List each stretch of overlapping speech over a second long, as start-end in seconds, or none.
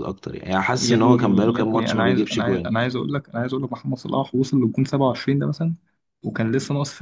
0.8-2.8